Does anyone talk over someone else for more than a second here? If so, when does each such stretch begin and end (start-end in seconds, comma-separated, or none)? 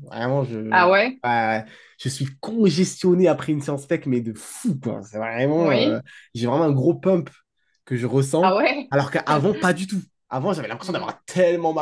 none